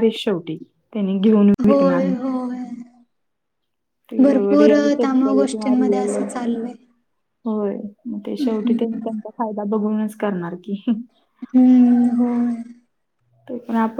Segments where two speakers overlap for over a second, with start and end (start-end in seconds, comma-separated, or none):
4.6-6.1